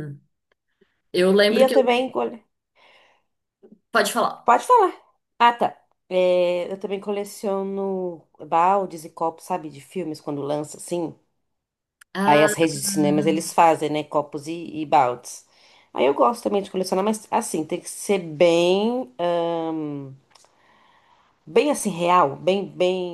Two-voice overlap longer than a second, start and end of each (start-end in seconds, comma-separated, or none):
12.3-13.6